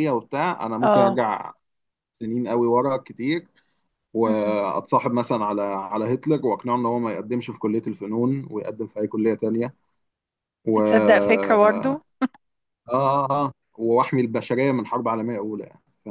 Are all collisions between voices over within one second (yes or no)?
no